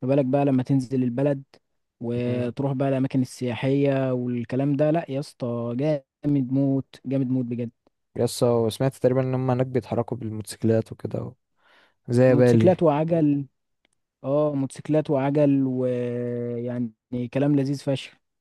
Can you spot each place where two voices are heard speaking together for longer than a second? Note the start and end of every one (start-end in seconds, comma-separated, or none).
none